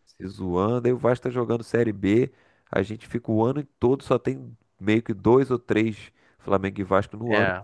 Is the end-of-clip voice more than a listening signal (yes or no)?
no